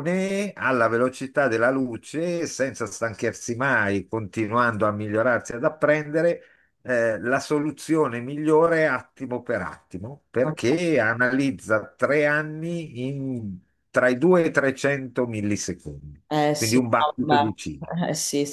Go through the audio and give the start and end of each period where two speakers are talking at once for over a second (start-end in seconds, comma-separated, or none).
16.5-17.9